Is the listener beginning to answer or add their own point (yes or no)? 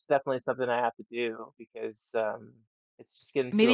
yes